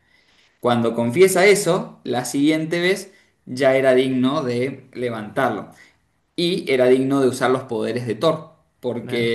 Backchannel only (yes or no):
yes